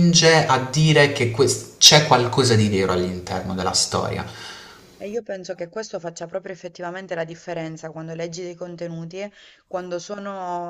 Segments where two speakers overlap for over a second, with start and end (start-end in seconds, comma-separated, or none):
none